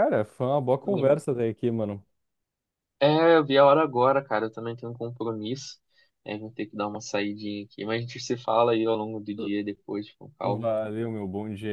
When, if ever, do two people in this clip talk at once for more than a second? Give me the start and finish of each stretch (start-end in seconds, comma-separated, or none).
none